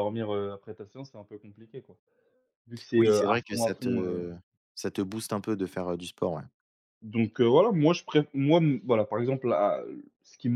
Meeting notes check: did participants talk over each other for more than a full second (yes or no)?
yes